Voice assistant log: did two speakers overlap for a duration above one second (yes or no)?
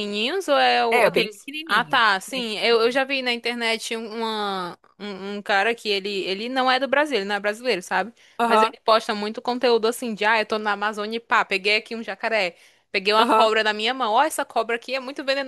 yes